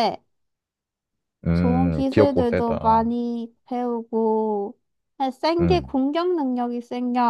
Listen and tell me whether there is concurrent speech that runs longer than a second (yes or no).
yes